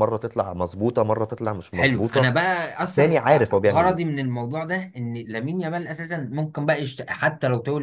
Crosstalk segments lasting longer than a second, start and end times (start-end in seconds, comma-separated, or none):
3.0-4.2